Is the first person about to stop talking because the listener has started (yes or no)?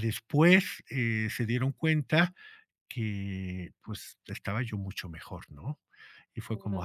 no